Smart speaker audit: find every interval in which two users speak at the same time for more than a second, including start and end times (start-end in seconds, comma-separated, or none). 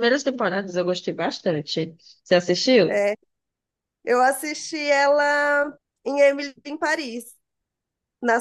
none